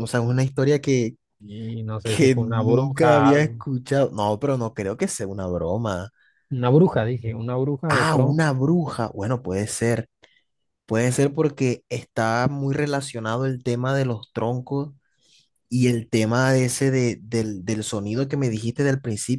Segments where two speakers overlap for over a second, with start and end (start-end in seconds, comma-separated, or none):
2.0-3.6